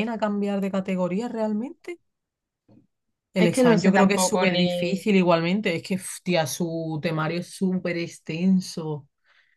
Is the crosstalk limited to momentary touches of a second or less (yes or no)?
no